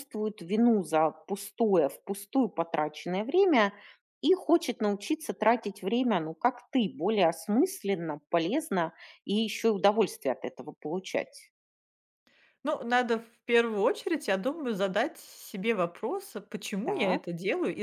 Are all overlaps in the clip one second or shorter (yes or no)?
yes